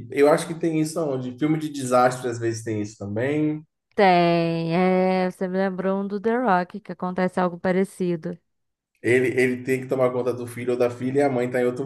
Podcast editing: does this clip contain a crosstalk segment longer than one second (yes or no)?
no